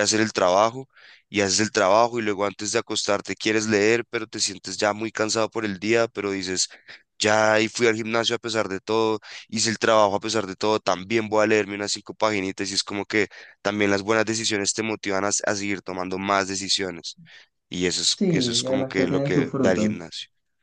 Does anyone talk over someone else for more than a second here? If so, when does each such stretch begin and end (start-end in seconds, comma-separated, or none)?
18.2-19.9